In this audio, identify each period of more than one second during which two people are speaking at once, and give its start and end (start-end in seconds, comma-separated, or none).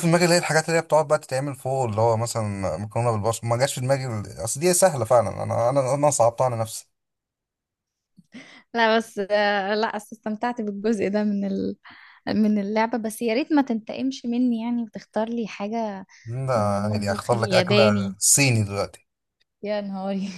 16.6-18.1